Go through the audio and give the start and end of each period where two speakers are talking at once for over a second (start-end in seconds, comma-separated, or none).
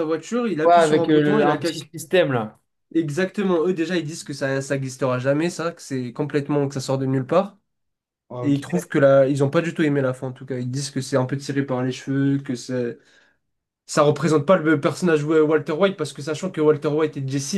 0.6-1.9